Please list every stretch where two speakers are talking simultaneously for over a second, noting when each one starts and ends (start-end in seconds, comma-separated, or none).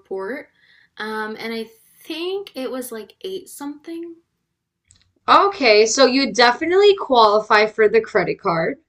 none